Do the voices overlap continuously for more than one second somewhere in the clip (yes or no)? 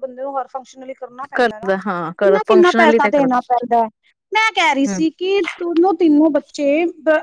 yes